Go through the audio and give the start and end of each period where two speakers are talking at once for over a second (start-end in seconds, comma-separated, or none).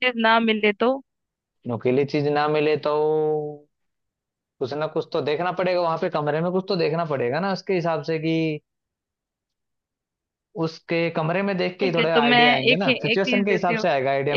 11.8-13.8